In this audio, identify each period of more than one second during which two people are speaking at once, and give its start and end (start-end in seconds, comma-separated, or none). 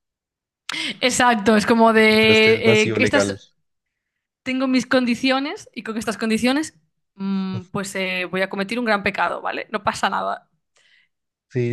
1.9-3.4